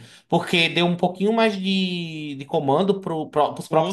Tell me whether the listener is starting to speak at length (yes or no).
no